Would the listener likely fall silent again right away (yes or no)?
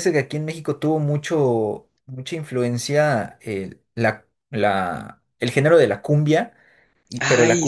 yes